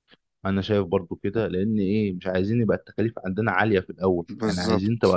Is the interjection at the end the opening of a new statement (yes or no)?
no